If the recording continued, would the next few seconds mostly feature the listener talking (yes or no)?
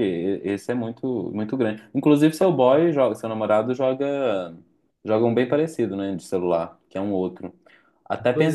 no